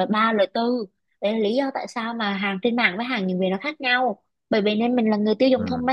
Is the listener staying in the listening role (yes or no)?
yes